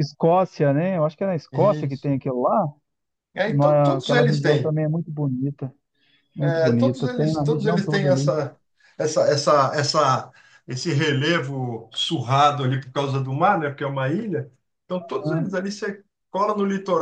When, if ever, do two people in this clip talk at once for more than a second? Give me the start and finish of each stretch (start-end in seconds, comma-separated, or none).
3.4-4.8, 6.4-8.3